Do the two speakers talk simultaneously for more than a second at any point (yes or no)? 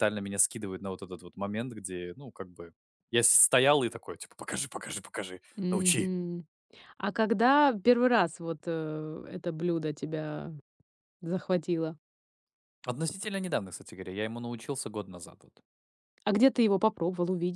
no